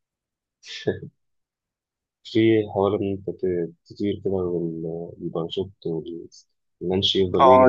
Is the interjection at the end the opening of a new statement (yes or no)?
yes